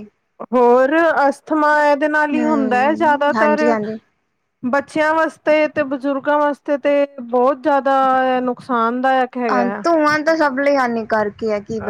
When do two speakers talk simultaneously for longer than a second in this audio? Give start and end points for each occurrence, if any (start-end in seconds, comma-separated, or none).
2.3-3.6